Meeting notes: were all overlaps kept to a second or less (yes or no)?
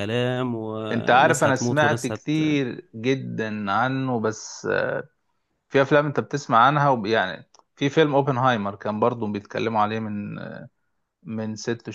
no